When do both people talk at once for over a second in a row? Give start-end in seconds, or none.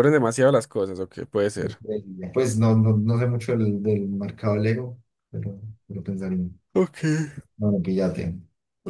none